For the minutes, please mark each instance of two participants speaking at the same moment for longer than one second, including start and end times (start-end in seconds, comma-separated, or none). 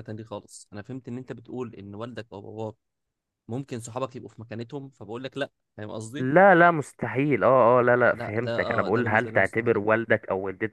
8.1-9.8